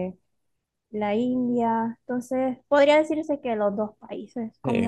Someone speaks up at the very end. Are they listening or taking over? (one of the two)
taking over